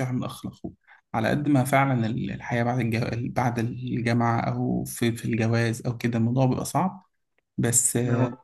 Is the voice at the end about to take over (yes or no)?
no